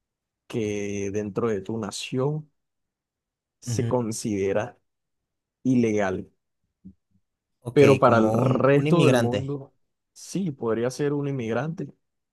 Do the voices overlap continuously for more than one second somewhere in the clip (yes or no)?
yes